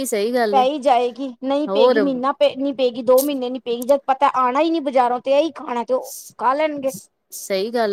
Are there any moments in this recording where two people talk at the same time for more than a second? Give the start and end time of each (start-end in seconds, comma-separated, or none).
none